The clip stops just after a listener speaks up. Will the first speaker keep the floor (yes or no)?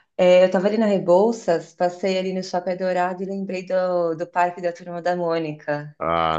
no